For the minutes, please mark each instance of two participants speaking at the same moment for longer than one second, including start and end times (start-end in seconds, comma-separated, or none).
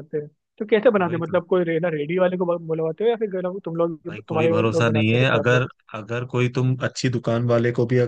4.1-5.7